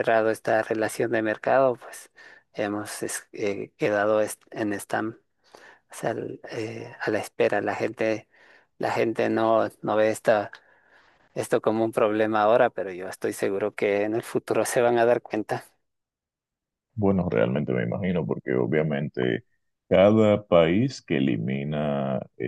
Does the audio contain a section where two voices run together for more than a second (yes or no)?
no